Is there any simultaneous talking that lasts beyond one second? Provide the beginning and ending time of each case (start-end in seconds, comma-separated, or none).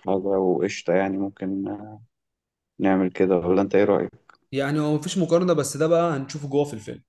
none